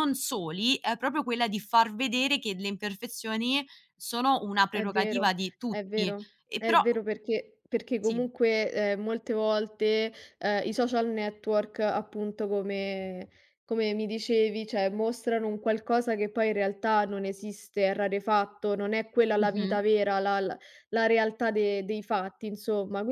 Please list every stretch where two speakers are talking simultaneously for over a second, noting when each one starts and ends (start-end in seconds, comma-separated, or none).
4.7-6.8